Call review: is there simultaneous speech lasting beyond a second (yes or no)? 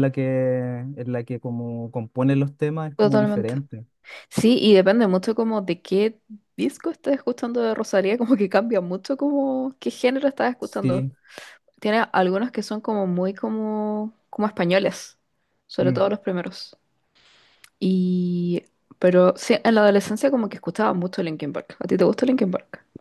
no